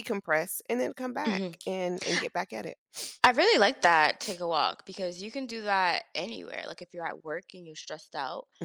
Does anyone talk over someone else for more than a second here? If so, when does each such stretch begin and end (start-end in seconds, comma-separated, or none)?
none